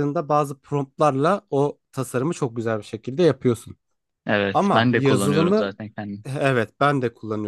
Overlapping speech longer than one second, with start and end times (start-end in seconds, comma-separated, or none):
4.5-5.7